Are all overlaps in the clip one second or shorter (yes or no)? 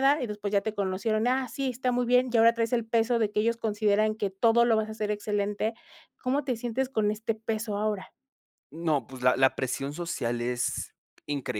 yes